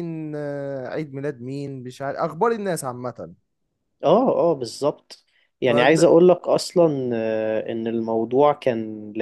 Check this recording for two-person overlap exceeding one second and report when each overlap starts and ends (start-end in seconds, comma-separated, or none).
none